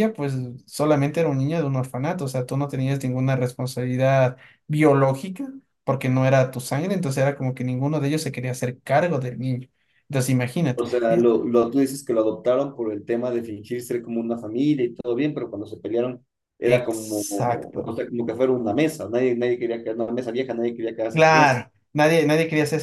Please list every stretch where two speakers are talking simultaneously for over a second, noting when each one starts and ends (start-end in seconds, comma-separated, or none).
16.6-17.9